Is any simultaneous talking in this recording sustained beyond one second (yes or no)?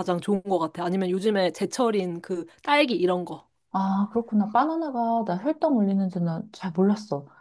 no